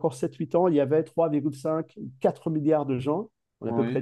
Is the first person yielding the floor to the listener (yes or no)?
no